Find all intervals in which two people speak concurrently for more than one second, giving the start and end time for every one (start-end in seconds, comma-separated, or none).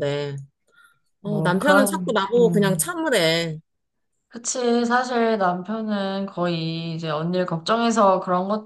1.2-2.9